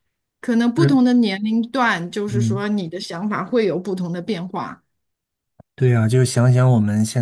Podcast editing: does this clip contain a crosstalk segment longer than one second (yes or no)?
no